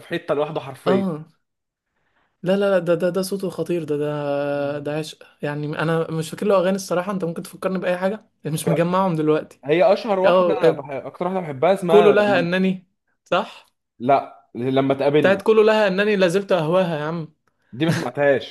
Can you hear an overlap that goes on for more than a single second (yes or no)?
no